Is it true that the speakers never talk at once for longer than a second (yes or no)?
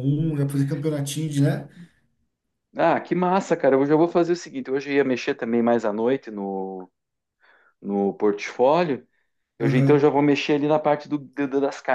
yes